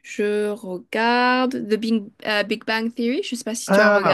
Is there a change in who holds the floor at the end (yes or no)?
yes